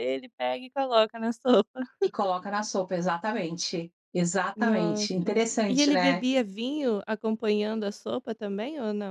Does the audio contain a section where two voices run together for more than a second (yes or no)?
yes